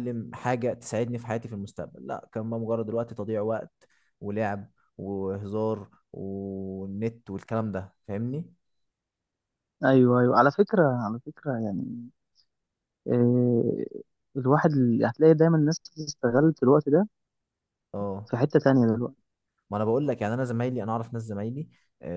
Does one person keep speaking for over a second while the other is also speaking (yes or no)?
no